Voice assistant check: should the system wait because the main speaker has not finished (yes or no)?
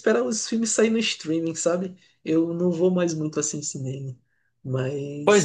no